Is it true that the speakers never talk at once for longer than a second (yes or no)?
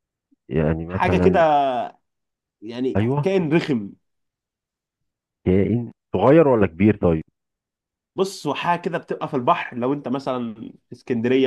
yes